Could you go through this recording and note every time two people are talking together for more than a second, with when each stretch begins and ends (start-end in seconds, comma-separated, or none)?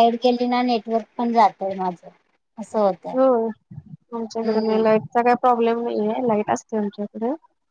none